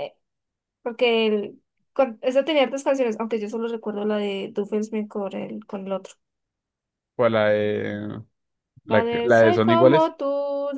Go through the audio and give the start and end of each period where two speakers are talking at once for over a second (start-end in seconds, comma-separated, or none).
8.9-10.2